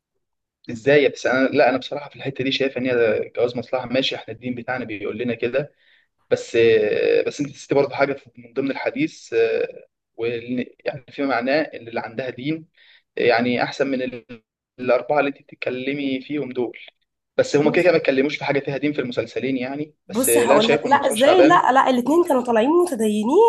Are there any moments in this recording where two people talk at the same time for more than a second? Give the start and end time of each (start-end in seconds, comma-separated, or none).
20.1-21.7